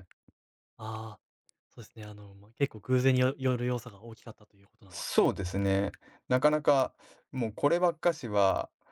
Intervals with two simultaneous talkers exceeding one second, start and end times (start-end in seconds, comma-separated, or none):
none